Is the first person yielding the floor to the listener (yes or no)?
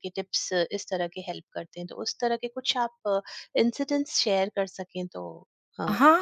yes